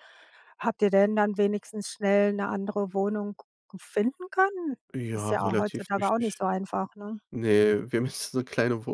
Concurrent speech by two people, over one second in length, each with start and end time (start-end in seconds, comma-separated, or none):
5.1-6.4